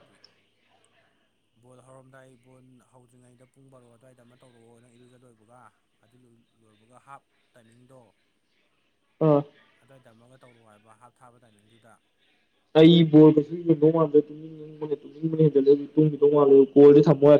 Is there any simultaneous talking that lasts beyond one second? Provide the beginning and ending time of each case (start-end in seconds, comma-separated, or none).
none